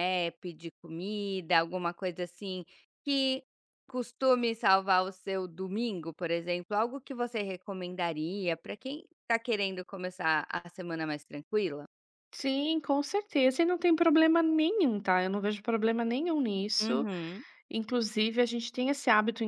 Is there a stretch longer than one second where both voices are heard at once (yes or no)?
no